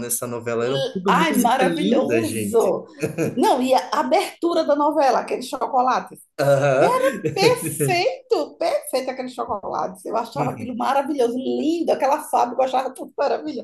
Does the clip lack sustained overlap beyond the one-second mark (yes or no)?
no